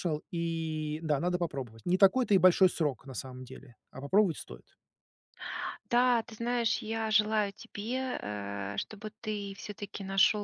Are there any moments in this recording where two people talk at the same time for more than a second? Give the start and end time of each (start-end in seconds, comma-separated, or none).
none